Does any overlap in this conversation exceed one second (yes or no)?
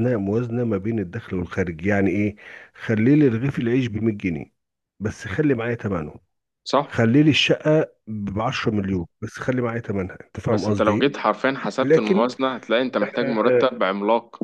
no